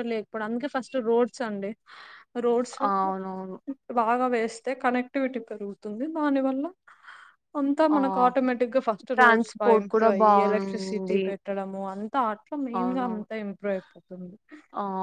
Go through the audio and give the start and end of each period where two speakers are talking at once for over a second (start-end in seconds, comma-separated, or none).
9.2-11.2